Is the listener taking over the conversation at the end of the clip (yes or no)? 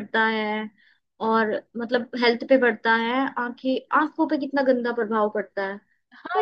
yes